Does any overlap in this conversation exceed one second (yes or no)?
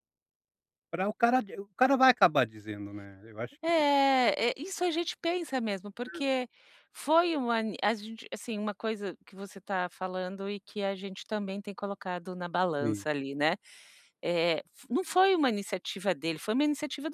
no